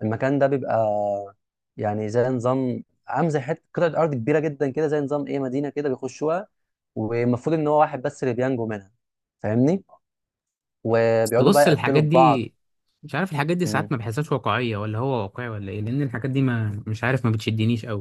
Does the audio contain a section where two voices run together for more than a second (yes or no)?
yes